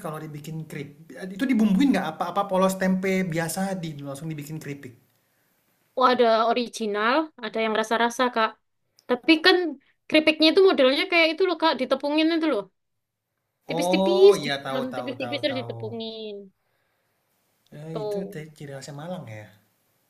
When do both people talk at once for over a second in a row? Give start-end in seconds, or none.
13.8-15.8